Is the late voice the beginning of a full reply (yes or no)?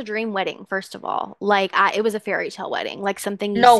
no